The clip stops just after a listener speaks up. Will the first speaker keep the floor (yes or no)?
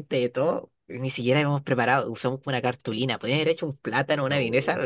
yes